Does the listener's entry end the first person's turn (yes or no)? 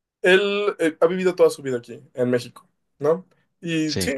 no